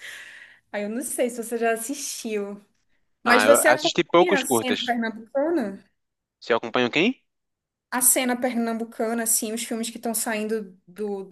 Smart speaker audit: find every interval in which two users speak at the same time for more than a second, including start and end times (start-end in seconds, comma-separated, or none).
3.2-5.0